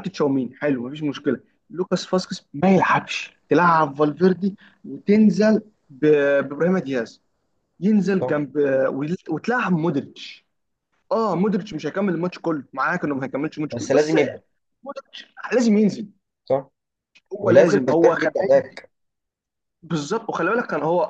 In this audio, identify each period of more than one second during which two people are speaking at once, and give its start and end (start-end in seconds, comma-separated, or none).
17.4-18.8